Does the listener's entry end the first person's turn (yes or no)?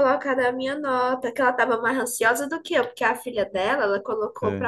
no